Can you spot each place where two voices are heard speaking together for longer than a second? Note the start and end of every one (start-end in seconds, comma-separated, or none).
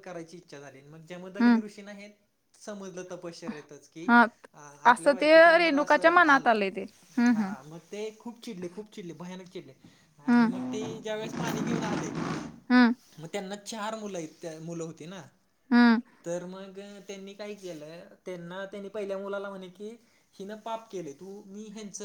4.9-6.5